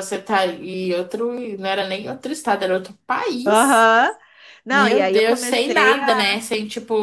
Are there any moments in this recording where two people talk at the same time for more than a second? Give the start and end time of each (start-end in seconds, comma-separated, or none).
4.7-6.4